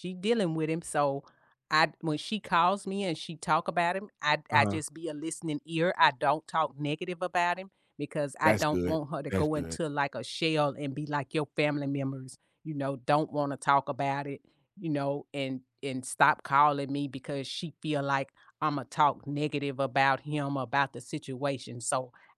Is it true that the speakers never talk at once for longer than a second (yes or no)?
no